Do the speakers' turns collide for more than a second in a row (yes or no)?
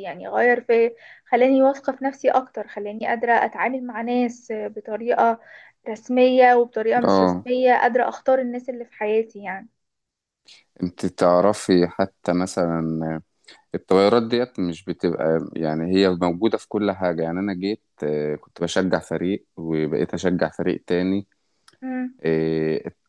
no